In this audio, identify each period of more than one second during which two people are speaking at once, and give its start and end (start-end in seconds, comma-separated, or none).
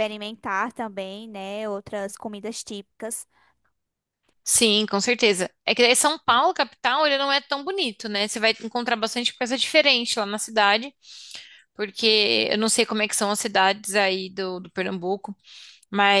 none